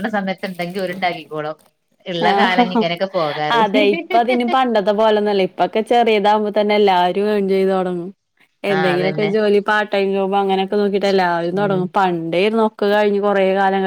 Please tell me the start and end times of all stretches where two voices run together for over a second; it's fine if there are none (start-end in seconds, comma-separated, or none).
none